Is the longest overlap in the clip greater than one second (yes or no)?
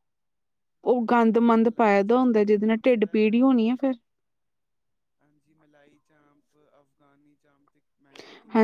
yes